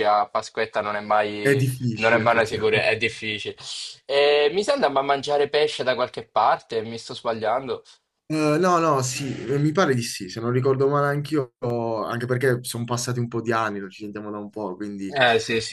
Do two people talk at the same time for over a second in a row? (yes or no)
yes